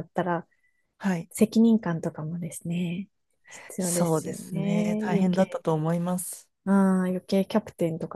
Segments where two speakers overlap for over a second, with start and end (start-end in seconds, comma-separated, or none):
3.8-5.6